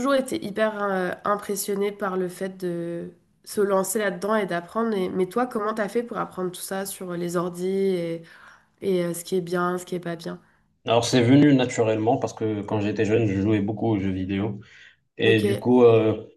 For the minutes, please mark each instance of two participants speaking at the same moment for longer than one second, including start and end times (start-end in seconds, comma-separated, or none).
none